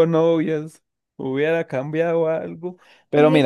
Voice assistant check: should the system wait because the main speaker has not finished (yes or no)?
yes